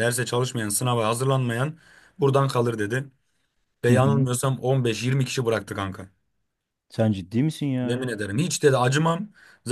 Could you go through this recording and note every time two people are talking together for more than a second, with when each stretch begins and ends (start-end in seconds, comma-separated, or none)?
none